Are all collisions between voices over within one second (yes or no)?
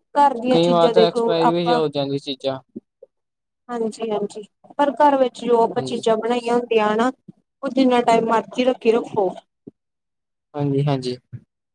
no